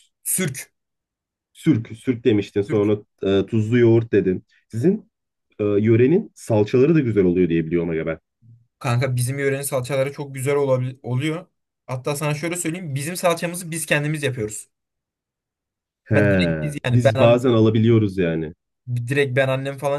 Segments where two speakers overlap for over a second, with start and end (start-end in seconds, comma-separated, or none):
16.1-17.4